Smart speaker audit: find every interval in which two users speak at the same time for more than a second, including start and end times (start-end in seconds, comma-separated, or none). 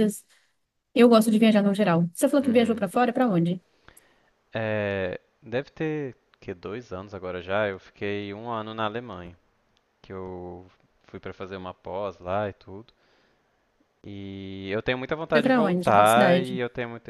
15.3-16.6